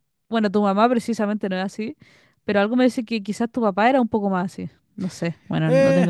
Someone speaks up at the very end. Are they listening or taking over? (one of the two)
taking over